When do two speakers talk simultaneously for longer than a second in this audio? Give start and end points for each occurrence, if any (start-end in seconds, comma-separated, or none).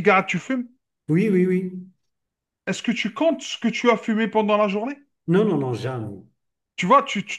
none